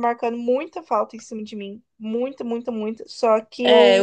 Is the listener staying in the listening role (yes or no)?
no